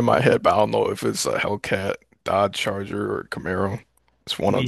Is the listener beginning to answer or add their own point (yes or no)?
yes